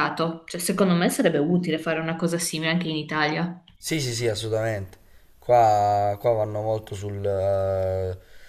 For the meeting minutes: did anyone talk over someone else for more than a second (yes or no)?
no